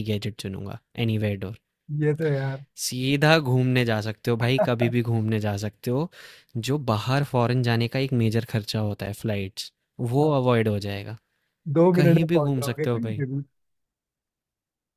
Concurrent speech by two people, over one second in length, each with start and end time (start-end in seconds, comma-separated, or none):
11.9-13.2